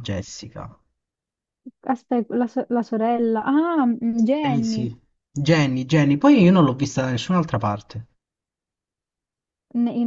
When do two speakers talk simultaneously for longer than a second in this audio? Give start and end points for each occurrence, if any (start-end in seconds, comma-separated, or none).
none